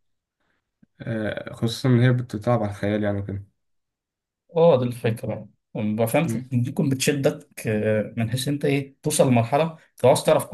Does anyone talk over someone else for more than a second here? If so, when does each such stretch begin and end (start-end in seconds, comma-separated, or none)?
none